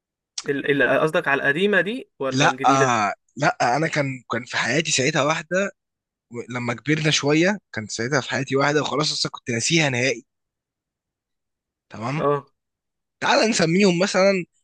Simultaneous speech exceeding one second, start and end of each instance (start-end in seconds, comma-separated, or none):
none